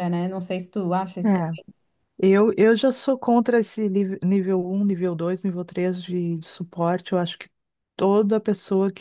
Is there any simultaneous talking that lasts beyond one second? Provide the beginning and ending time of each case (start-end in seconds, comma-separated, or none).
none